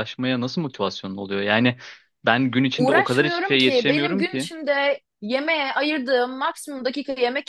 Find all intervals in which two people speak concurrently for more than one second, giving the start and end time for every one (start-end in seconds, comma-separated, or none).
2.8-4.5